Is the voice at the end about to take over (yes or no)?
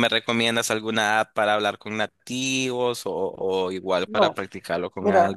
yes